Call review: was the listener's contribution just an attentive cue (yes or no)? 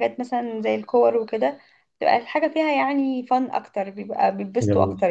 no